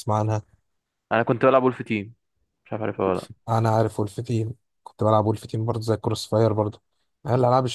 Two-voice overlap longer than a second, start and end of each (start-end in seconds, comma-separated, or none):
none